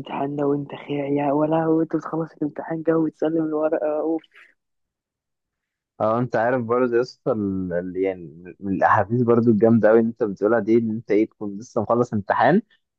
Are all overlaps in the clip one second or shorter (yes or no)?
yes